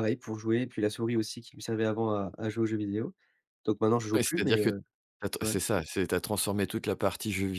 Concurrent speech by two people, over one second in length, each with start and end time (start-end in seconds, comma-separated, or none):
none